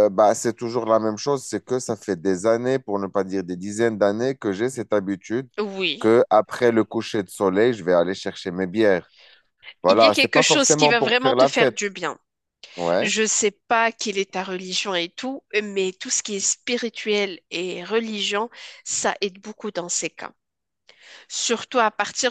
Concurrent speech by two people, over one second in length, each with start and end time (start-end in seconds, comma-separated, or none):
9.9-11.8